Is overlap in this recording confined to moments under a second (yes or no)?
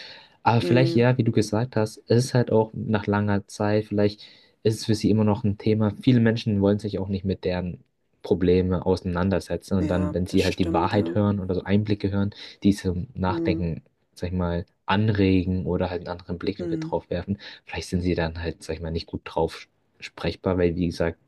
no